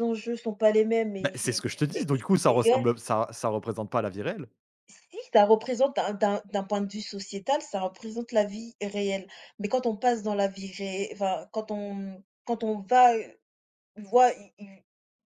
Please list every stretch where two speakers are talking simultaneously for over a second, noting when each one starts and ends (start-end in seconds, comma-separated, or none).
1.2-2.9